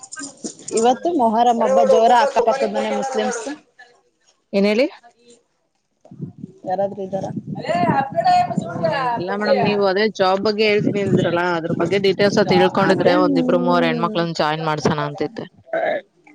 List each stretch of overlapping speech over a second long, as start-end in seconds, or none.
12.9-14.5